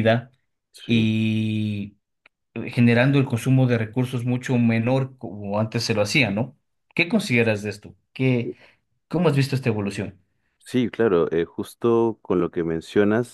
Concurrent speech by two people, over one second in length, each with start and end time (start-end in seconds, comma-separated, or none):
none